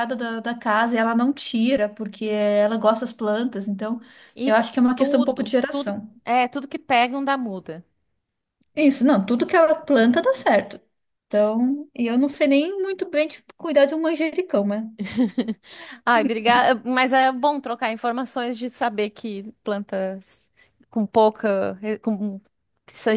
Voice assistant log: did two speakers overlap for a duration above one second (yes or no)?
yes